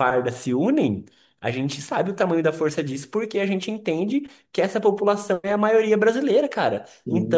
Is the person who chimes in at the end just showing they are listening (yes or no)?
yes